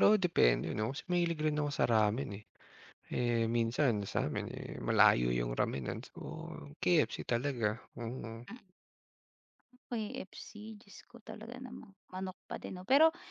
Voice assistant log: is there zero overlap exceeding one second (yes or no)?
yes